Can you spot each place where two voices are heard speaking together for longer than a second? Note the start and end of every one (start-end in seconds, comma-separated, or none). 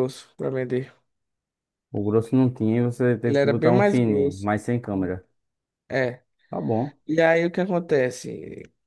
3.2-4.5